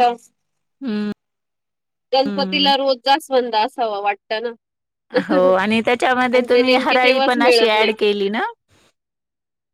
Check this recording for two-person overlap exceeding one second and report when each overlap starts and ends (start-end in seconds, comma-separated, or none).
6.3-7.9